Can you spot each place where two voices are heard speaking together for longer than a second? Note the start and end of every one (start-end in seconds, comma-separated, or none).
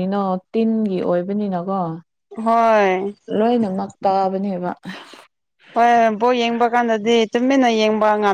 none